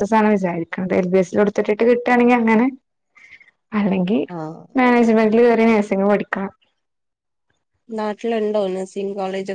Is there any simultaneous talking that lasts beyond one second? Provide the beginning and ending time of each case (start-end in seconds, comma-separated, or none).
none